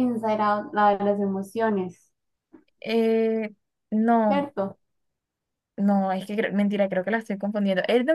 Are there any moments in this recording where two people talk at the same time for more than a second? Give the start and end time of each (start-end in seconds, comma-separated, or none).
none